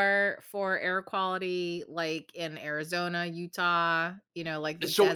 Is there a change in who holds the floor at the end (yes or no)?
yes